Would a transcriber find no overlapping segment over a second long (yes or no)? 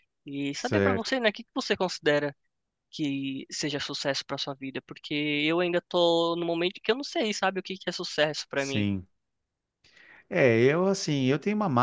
yes